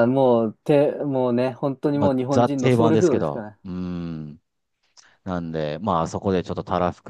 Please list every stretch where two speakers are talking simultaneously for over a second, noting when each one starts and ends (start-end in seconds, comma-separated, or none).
1.9-3.6